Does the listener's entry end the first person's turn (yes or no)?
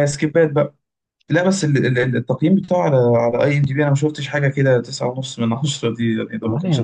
yes